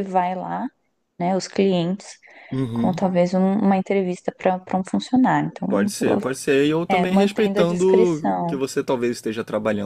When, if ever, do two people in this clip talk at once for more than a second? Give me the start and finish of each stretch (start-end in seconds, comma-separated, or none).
6.9-8.6